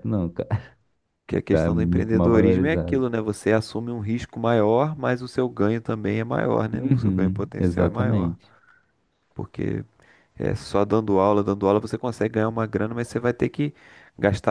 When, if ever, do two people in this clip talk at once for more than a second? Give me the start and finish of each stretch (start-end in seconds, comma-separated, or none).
1.5-3.0, 6.7-8.4